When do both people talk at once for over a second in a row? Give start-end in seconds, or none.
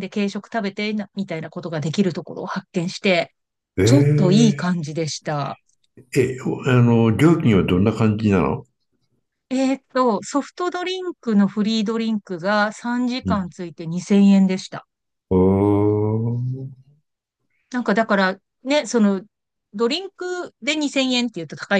none